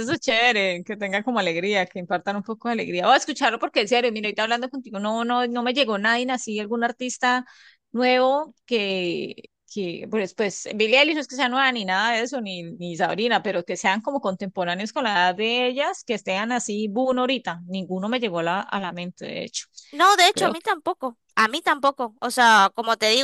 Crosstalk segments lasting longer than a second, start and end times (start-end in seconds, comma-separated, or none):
none